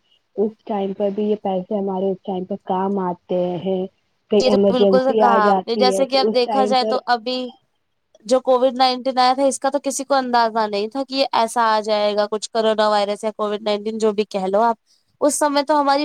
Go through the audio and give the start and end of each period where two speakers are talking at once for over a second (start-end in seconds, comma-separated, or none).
4.4-7.0